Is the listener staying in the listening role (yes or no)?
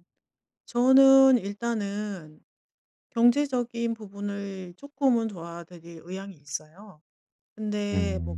yes